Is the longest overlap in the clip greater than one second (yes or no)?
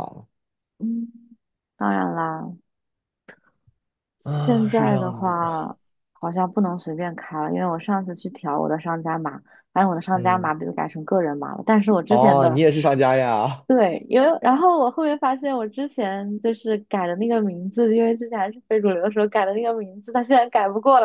yes